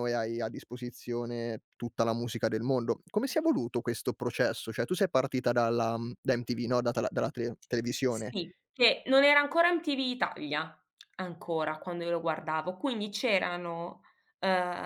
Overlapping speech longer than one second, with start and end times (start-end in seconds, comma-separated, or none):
none